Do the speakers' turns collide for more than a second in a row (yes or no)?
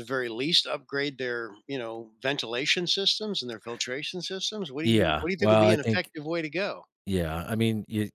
yes